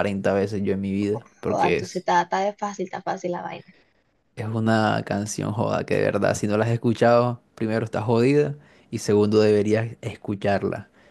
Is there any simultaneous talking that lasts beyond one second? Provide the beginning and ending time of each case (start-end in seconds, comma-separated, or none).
none